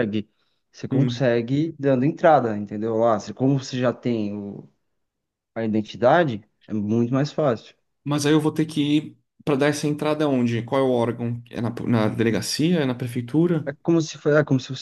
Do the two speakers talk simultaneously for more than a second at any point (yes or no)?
no